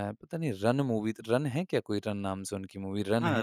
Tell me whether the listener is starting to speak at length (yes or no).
yes